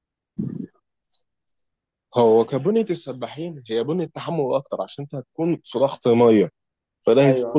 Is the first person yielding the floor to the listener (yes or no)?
no